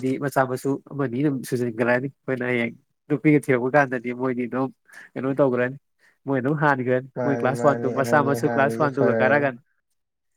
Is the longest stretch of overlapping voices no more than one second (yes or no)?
no